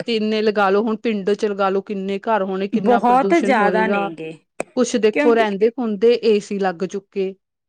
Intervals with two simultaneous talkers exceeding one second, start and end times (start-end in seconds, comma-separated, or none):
2.8-4.1